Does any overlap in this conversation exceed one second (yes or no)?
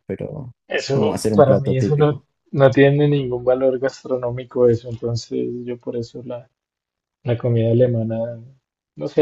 yes